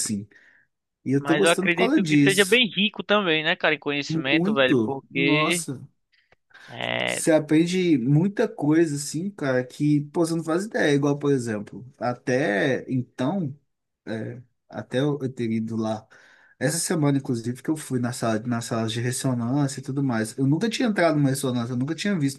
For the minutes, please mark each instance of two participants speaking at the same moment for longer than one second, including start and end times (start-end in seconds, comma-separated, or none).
1.2-2.6, 4.1-5.6